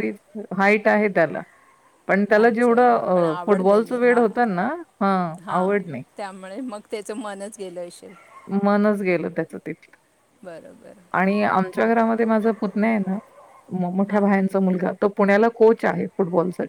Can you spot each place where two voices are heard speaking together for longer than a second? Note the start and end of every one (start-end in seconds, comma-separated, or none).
2.4-4.7